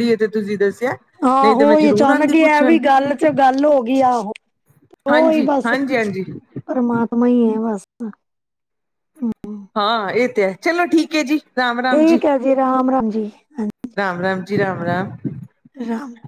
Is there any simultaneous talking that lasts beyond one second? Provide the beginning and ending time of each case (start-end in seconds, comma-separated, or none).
1.4-2.8